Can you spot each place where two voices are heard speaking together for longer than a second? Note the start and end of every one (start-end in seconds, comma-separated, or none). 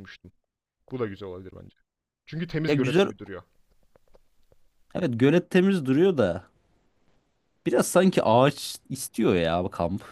none